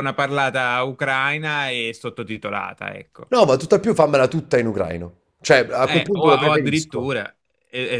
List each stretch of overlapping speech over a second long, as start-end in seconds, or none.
5.8-7.1